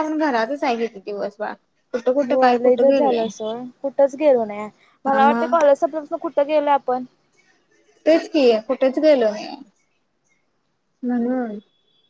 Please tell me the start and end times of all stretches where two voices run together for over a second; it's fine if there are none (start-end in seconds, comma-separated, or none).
2.3-3.5